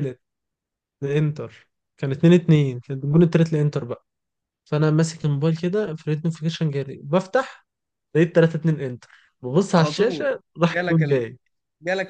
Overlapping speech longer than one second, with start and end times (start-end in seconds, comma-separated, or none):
9.7-11.2